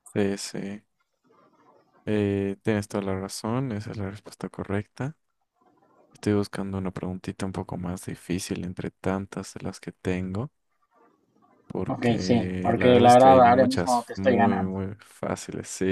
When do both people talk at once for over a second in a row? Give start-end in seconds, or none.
11.9-14.8